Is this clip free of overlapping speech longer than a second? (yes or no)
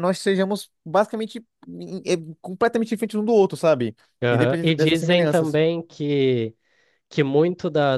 no